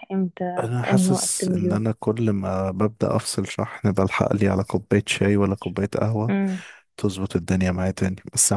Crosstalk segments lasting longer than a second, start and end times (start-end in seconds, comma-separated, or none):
0.6-1.8